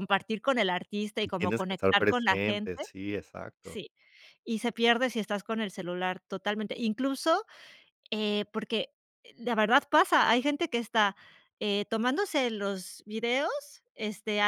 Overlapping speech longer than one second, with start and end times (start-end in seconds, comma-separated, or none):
1.2-2.8